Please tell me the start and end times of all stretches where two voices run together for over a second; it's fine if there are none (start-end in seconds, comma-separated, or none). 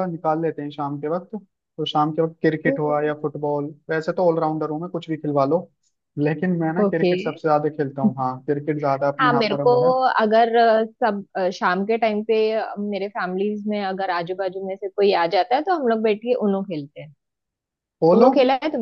none